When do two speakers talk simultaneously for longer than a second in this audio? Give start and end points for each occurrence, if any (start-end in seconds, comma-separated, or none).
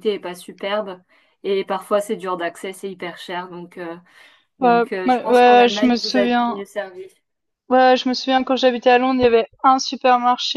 4.6-6.6